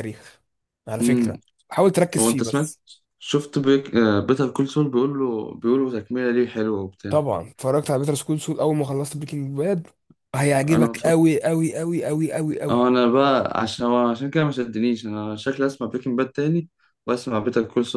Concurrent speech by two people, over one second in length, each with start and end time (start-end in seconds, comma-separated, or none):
none